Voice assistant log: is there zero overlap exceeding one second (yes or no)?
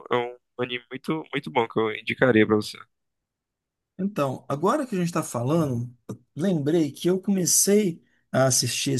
yes